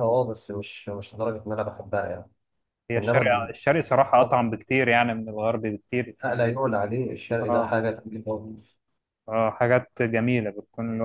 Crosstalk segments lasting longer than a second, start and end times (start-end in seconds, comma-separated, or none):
none